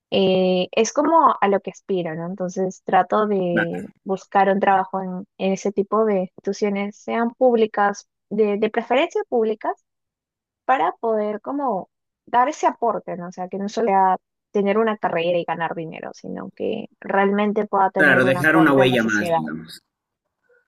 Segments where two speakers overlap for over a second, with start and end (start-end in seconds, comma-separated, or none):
18.0-19.4